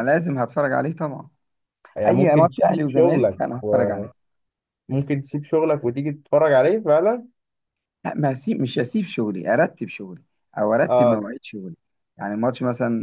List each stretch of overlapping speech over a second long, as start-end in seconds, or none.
2.1-3.4